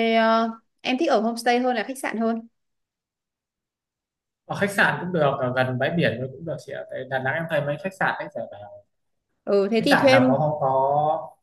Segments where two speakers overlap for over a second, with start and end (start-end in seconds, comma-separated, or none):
none